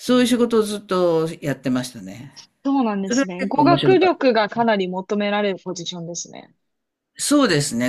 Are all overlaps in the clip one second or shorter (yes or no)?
no